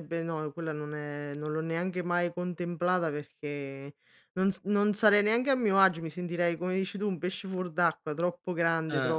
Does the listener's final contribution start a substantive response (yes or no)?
no